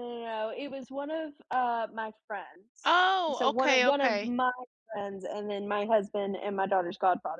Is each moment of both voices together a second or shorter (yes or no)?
no